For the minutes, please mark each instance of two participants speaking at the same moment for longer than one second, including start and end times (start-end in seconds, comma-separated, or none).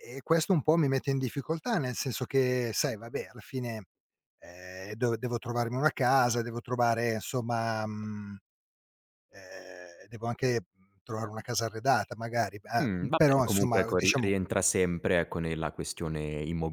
12.8-14.3